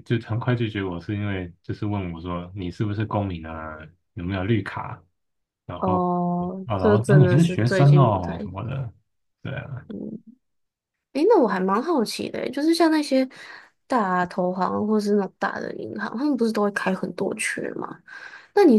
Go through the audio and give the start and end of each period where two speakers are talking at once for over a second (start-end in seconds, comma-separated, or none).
6.7-8.5